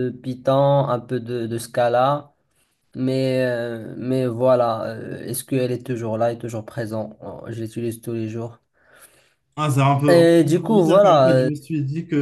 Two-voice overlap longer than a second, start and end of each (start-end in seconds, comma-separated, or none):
10.1-11.5